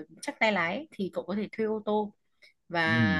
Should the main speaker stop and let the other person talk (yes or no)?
no